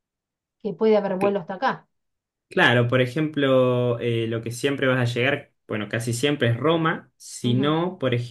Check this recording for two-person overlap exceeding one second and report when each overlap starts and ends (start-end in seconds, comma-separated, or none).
none